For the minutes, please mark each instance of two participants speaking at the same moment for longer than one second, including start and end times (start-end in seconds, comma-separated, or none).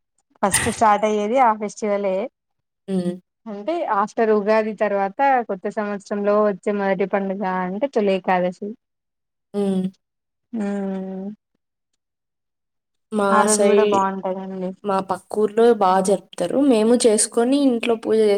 none